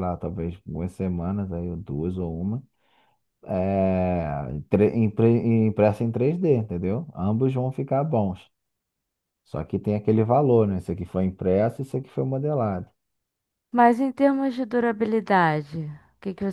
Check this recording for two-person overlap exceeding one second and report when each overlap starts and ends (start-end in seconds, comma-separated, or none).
none